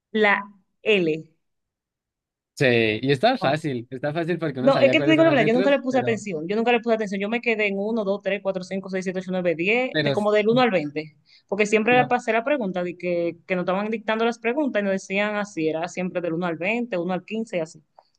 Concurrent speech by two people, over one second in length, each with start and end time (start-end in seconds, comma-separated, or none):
4.6-6.2